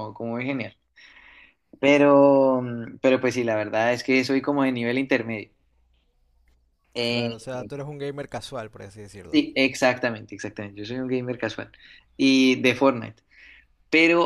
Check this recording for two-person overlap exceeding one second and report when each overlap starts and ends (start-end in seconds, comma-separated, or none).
none